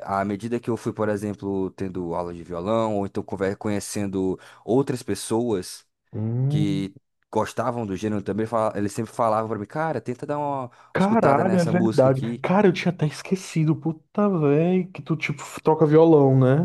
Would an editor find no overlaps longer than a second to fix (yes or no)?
no